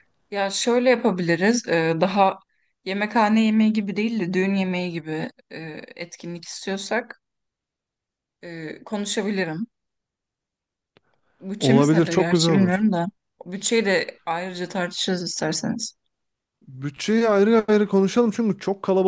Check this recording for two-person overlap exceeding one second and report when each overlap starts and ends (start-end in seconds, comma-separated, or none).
11.6-12.8